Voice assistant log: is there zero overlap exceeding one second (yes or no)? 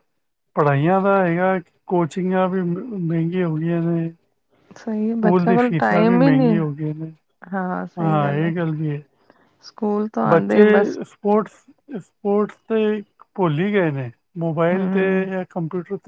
no